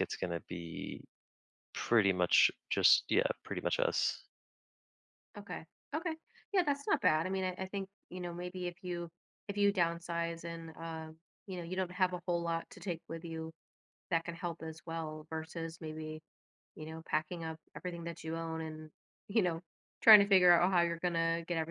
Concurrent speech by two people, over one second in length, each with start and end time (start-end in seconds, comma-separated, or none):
none